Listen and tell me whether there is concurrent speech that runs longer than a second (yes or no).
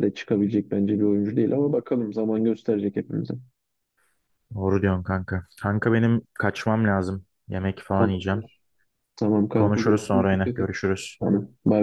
yes